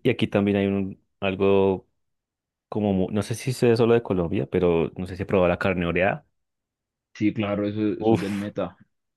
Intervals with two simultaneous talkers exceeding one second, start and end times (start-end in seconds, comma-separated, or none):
none